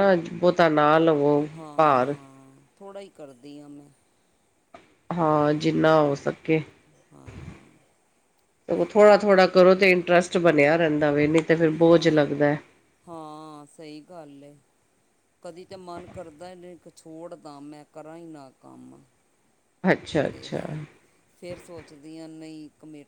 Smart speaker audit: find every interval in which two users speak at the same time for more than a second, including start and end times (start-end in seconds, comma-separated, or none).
none